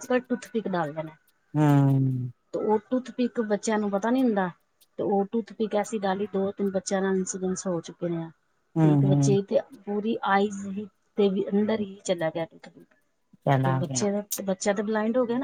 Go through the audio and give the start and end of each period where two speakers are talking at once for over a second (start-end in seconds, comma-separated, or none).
none